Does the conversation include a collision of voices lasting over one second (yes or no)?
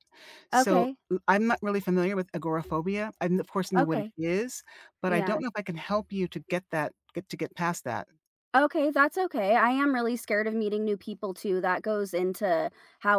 no